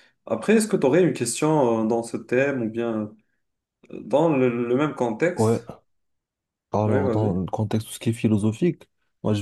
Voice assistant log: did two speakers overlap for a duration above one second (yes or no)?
no